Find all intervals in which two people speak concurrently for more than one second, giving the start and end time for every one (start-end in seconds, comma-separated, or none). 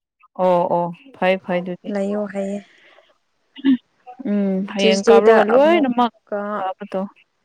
4.8-6.1